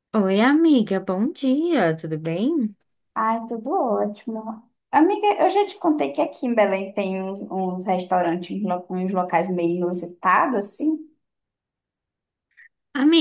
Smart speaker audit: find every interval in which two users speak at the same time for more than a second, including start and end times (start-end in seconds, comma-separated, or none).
none